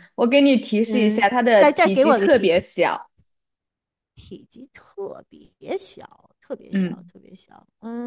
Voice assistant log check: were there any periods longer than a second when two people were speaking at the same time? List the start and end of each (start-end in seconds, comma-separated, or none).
0.9-2.6